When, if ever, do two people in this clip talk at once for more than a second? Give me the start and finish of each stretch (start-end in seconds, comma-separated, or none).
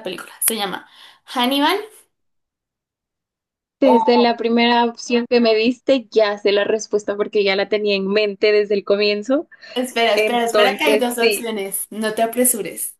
10.1-11.5